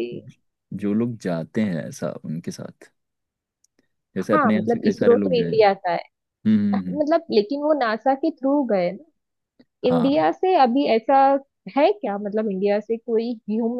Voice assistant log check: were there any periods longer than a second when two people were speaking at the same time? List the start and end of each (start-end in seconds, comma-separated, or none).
4.3-5.9